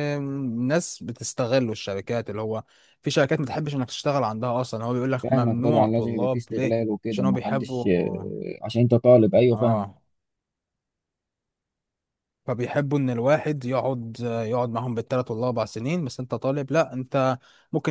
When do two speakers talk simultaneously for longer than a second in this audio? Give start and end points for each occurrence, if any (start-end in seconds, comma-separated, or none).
5.2-7.8